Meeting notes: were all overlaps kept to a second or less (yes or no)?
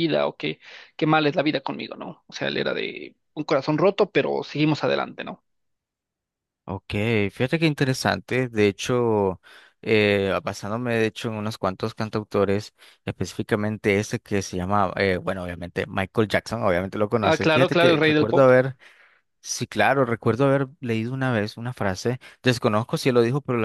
no